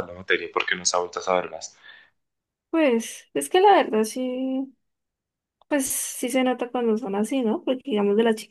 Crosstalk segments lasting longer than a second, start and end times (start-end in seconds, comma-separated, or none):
none